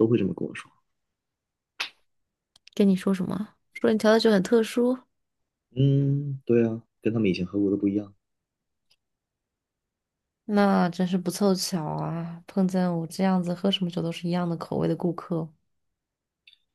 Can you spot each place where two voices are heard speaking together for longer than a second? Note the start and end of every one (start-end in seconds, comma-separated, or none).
none